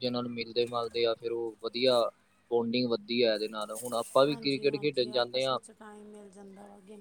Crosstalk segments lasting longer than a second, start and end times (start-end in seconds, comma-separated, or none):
4.3-5.6